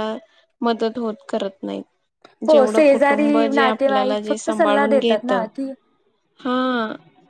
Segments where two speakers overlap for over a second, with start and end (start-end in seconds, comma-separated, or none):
2.5-5.3